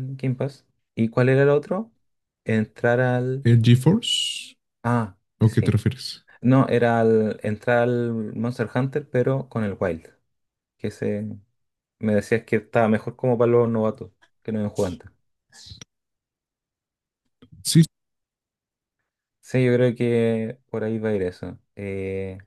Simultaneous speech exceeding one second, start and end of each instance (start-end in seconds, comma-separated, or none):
none